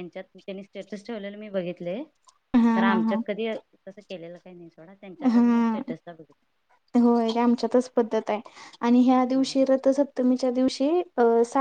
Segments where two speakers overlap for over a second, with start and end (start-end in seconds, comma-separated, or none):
none